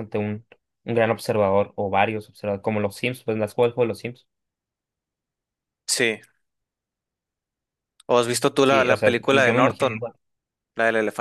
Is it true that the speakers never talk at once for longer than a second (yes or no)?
no